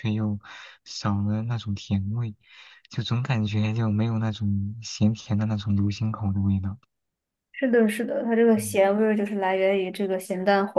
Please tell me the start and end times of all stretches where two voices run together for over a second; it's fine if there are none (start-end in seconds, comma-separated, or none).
none